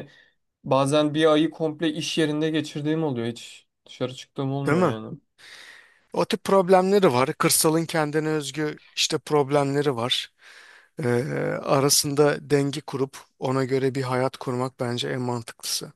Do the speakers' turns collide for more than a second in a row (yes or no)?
no